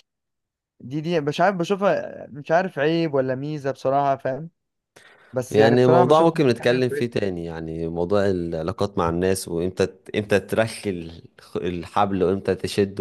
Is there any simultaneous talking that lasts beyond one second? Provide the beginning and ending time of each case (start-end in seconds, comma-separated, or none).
5.5-7.2